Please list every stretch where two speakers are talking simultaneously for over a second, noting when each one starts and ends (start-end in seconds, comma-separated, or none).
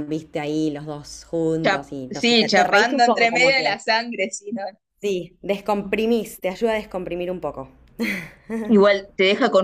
1.6-3.8